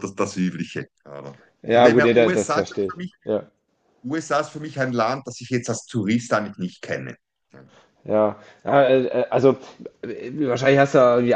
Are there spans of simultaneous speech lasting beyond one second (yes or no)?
yes